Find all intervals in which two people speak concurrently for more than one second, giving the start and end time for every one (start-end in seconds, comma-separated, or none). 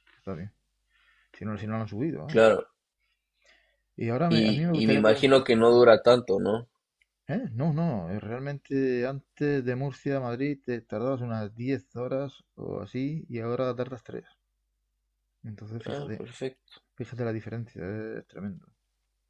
4.3-5.6